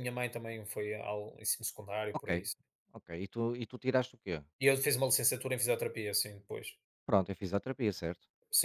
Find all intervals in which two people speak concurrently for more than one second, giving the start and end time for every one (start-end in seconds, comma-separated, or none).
none